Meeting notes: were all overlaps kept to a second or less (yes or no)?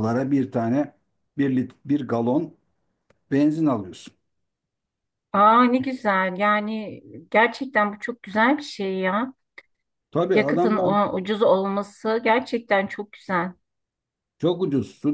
yes